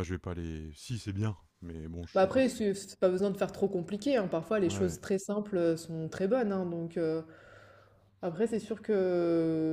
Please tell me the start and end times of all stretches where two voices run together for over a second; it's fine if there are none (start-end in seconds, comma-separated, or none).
none